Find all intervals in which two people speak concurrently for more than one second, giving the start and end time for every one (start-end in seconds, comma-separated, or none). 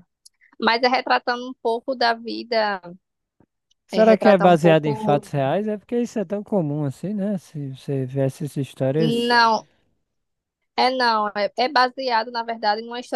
3.9-5.2